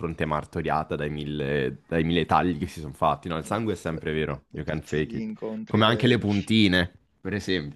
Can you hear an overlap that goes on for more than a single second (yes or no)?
yes